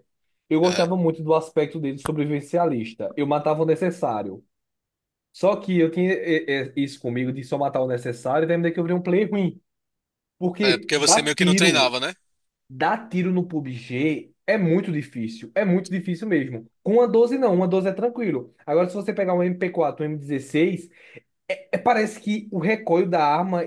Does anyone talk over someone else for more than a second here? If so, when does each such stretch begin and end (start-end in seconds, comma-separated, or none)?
10.6-11.9